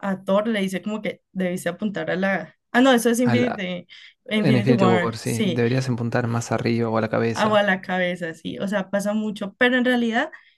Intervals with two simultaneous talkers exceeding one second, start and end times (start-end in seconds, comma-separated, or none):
4.3-5.6